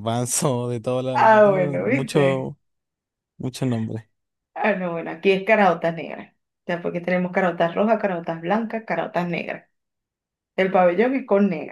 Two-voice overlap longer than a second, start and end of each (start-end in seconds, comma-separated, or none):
1.1-2.5